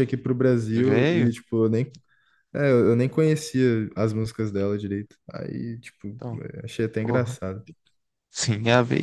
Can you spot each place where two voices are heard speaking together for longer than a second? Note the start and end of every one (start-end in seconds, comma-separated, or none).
none